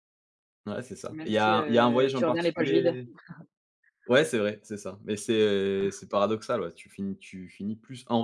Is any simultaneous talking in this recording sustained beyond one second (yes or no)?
yes